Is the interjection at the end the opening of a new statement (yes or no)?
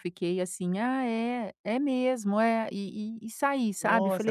yes